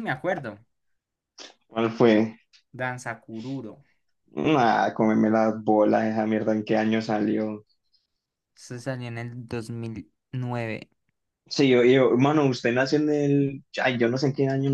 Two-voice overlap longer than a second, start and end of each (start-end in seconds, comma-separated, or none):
none